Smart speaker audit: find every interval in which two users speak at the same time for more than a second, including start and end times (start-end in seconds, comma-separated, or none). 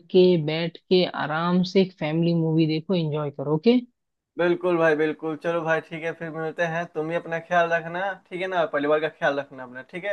none